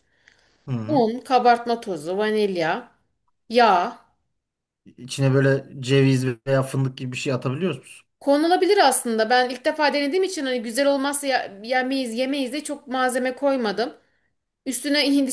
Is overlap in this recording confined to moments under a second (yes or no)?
yes